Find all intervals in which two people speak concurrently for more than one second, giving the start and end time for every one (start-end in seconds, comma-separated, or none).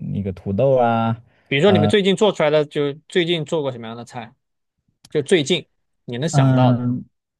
none